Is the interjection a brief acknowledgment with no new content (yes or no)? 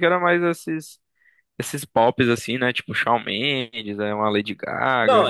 no